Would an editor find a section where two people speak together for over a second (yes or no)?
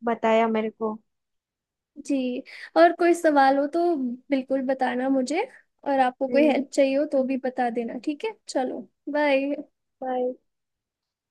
no